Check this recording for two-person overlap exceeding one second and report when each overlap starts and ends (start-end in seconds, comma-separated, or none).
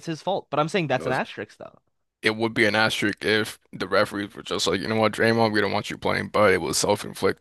none